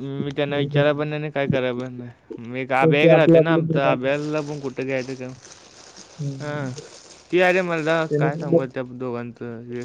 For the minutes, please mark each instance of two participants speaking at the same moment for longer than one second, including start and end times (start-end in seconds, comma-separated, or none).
2.8-4.1